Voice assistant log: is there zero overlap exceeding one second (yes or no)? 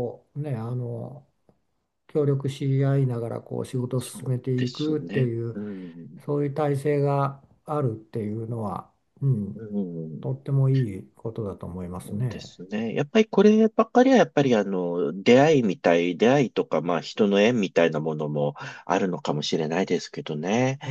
no